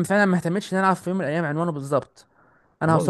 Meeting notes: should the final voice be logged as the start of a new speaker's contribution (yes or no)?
yes